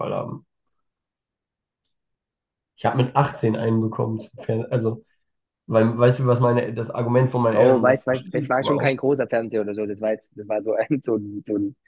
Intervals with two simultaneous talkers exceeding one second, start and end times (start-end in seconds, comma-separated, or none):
7.5-9.0